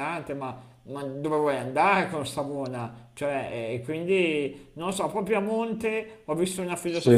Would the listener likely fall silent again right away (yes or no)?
yes